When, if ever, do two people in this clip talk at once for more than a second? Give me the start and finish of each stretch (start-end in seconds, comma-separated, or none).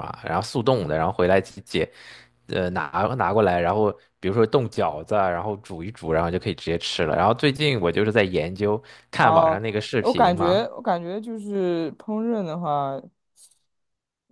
9.2-10.7